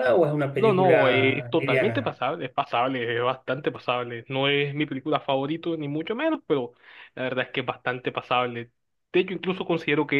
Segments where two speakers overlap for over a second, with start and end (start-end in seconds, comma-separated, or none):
0.5-2.1